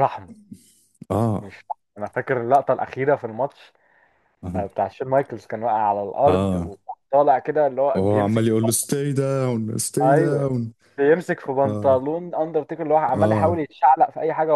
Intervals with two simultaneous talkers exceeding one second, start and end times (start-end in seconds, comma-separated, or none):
none